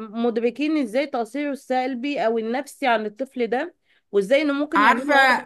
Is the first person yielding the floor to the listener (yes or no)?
no